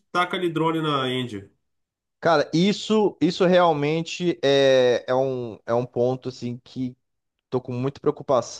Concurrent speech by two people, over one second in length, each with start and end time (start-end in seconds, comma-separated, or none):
none